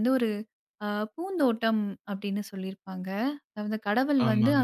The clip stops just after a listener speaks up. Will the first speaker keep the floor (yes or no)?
yes